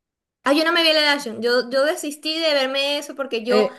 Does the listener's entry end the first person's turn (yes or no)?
yes